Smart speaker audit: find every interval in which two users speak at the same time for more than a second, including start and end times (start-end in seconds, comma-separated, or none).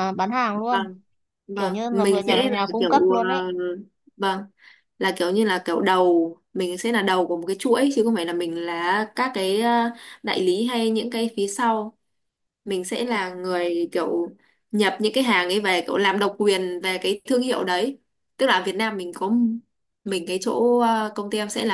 1.6-3.2